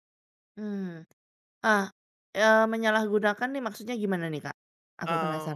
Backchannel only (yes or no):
no